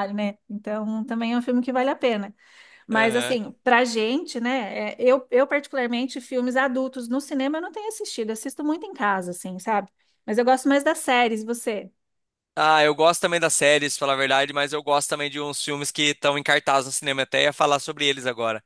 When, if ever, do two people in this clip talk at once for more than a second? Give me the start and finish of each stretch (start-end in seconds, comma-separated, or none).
none